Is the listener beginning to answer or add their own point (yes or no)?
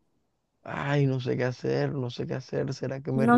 yes